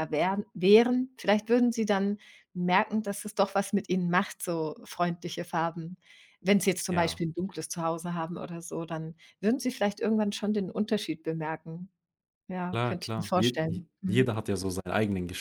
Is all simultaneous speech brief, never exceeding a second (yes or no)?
no